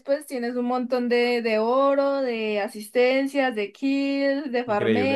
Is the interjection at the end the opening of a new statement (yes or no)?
yes